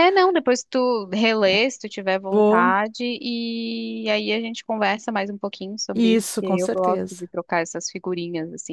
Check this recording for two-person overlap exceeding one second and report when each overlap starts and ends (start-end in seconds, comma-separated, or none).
5.9-7.2